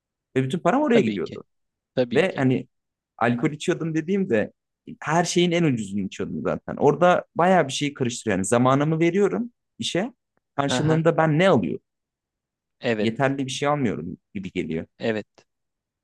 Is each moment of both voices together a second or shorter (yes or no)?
yes